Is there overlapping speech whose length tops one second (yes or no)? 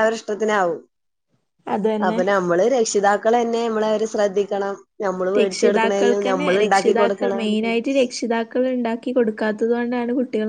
yes